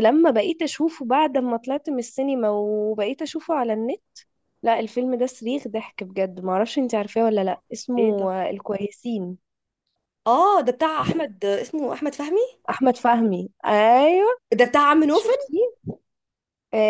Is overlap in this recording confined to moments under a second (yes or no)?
yes